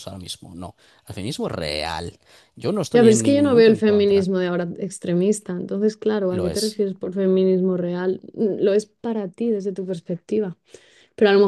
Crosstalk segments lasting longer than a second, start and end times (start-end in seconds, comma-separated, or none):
2.9-4.3